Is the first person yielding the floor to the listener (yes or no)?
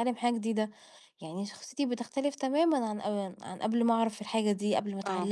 yes